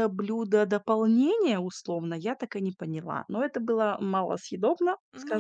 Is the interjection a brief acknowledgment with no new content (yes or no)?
no